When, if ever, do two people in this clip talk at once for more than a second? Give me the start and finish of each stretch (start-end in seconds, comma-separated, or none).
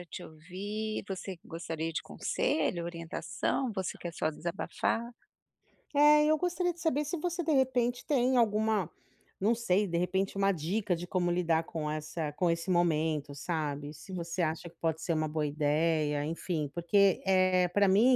none